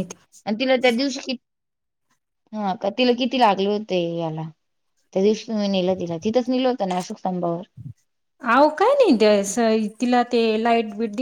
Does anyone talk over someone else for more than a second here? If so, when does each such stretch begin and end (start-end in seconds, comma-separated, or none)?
none